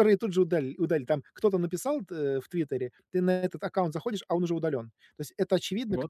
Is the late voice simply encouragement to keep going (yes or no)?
yes